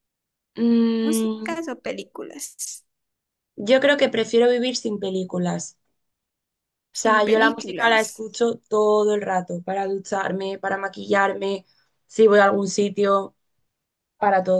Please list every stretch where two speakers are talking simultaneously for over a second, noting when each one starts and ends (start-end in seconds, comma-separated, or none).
6.9-8.2